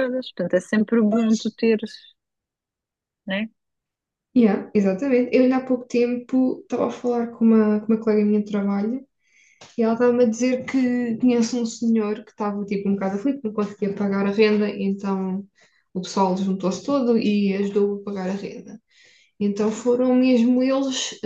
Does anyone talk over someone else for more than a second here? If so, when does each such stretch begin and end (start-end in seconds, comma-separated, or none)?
none